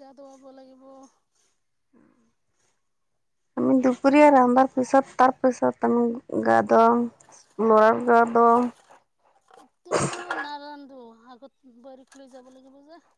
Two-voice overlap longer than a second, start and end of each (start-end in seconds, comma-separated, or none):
none